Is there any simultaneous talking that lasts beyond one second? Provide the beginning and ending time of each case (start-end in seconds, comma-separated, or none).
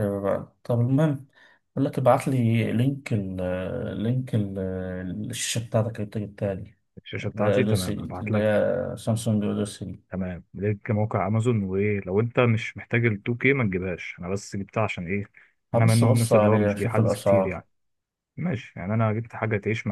7.3-8.6, 15.7-17.6